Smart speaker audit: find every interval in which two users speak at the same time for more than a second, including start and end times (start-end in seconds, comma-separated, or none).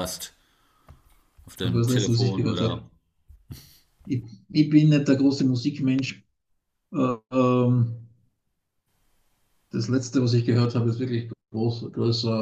1.6-2.9